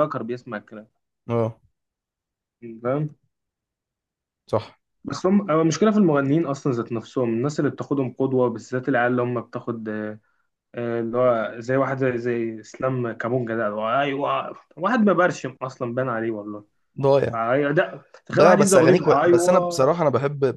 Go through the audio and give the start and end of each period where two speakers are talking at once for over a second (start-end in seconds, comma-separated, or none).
18.4-19.9